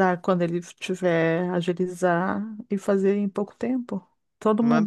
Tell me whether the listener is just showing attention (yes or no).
no